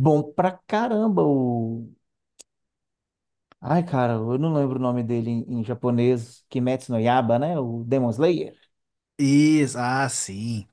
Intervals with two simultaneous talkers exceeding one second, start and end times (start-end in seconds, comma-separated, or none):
none